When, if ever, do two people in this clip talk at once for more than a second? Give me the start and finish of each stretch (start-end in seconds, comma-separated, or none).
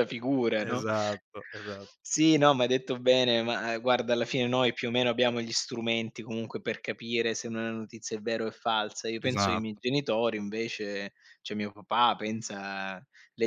none